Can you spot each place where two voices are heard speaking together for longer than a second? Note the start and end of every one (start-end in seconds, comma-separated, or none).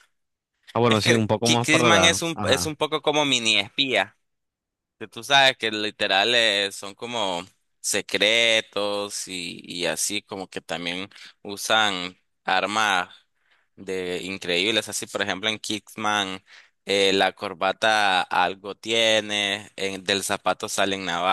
0.8-2.7